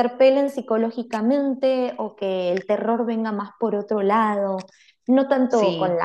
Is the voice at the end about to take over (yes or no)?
no